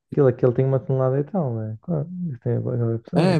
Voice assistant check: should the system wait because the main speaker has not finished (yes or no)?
no